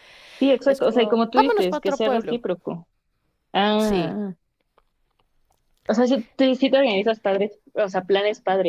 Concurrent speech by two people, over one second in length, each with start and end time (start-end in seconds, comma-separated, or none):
0.7-2.4